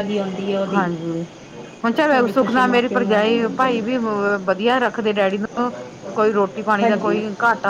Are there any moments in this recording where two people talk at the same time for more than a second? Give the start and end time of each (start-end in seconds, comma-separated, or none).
2.2-4.0